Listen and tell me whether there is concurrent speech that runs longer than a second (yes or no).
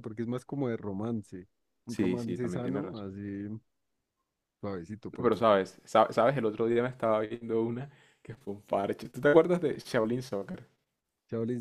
yes